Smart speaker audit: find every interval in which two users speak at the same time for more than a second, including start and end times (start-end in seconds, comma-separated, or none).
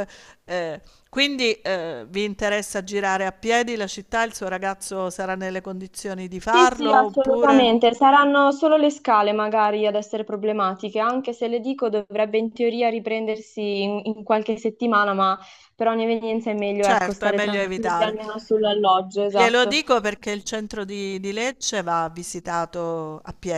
6.5-7.8, 16.8-18.1